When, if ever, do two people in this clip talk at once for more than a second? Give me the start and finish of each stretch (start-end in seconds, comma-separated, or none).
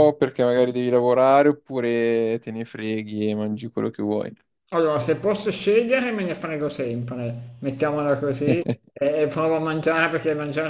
none